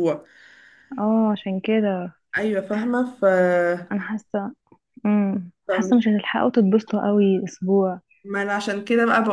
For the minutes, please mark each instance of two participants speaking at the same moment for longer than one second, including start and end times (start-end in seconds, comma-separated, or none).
none